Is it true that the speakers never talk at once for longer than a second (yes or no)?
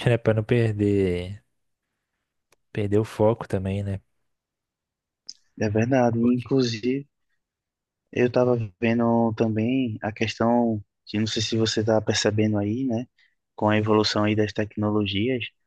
yes